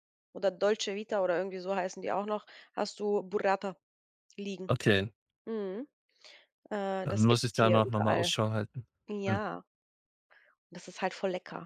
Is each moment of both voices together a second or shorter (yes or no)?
no